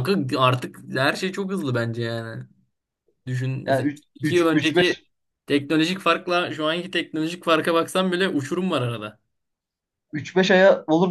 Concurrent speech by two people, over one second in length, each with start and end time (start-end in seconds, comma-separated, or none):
3.6-5.0